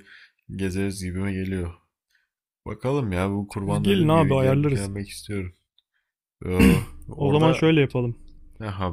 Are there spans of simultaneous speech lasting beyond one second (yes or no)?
yes